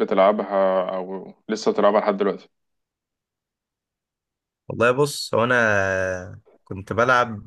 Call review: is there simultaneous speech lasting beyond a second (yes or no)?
no